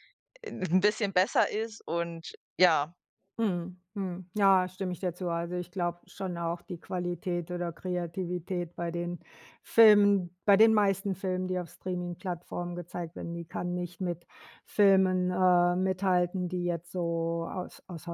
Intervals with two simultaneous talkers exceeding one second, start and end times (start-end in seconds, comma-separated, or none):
none